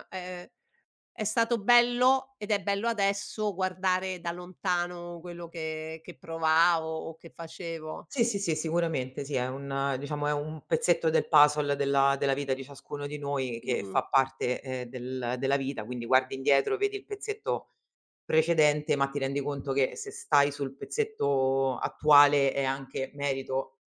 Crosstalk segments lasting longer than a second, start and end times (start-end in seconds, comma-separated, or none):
none